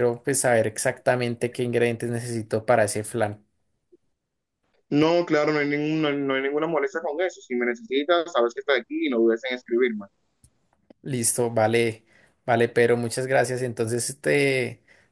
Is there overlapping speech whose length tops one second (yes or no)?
no